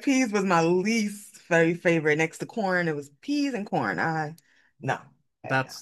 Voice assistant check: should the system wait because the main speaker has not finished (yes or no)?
no